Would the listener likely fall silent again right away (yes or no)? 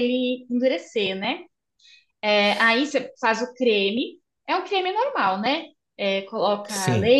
yes